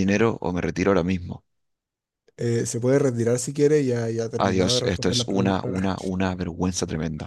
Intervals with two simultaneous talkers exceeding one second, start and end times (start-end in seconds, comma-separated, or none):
4.4-5.9